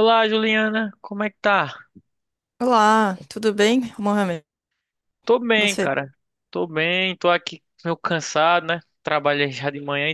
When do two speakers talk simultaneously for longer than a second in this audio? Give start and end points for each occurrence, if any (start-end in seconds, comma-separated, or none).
none